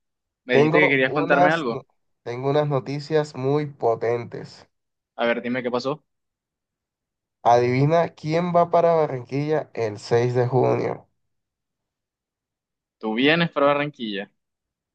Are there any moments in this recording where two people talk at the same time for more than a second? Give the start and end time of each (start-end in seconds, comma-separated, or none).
0.5-1.8